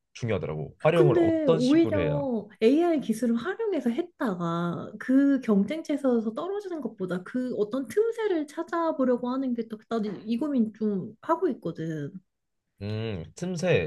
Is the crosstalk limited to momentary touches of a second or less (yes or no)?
no